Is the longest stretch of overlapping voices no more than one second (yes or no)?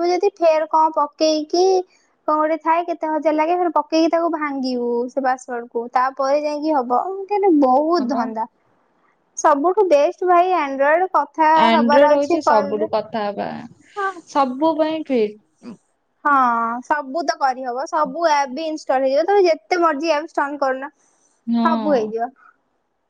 no